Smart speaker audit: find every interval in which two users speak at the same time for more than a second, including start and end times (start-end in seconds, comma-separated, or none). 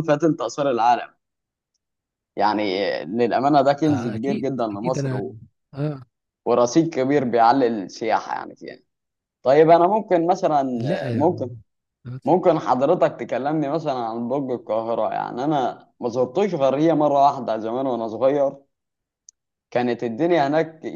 3.9-5.3